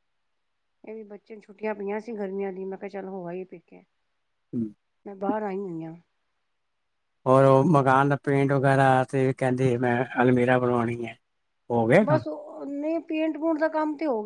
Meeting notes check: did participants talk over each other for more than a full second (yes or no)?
no